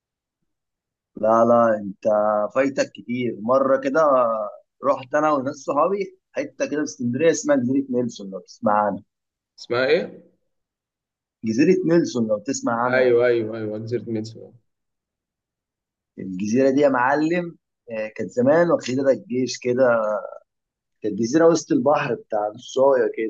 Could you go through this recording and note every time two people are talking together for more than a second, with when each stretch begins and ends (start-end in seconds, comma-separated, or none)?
none